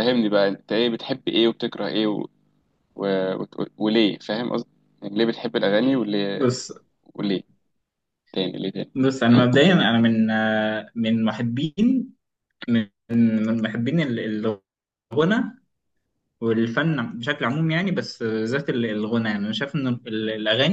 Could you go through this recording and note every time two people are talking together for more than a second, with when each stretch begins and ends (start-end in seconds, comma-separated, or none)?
none